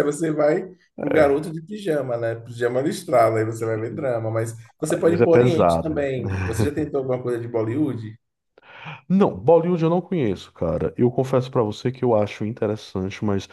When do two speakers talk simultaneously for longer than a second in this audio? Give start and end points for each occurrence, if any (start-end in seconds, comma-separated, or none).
4.8-6.1